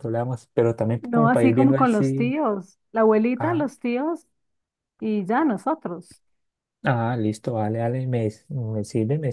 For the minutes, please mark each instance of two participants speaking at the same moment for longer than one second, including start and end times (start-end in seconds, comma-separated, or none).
1.0-2.3